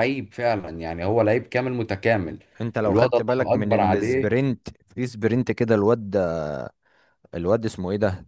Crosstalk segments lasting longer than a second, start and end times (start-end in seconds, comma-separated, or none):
2.8-4.5